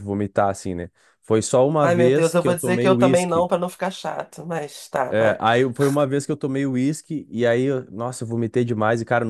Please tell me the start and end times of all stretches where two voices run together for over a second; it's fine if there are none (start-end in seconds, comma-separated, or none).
1.8-3.5